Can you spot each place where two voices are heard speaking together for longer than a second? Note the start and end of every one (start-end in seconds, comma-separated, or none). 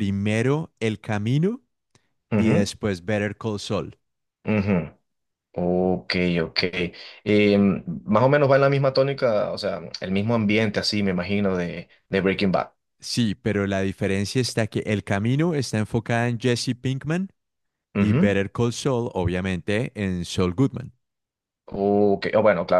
none